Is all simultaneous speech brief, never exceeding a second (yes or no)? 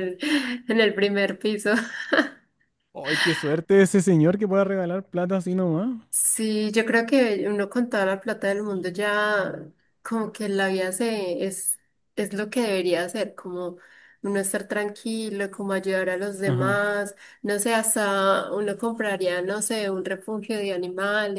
yes